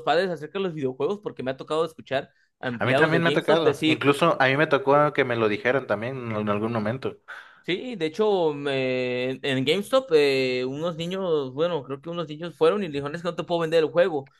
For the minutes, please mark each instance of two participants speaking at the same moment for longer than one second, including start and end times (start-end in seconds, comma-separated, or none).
2.8-4.1